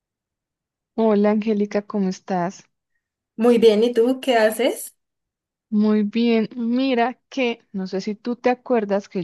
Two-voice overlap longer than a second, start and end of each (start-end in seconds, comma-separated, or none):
none